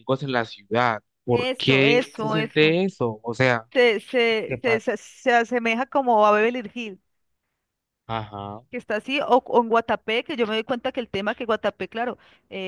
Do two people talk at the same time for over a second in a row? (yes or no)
yes